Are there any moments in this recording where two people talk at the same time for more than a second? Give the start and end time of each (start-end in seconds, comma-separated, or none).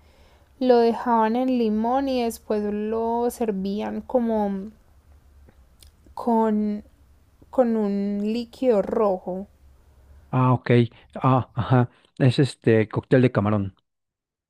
none